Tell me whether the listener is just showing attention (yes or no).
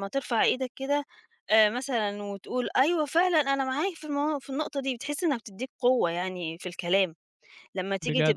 yes